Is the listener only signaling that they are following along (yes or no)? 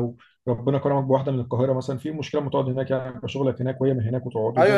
no